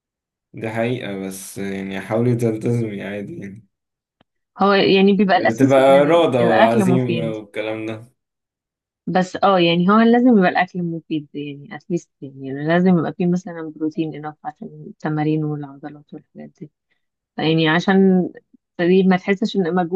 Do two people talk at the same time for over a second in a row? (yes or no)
yes